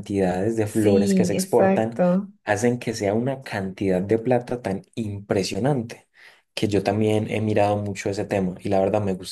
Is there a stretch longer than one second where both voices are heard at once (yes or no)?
yes